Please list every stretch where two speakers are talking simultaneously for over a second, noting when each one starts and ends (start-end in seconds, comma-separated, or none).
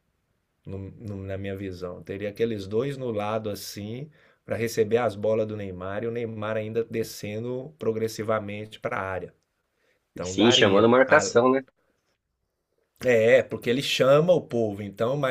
10.1-11.3